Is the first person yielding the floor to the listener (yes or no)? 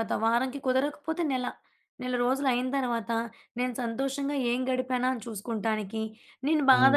no